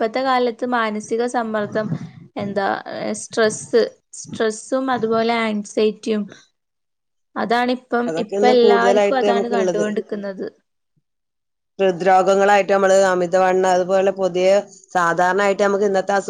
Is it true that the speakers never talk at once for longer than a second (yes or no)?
no